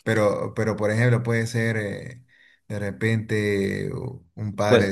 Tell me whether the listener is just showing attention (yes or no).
yes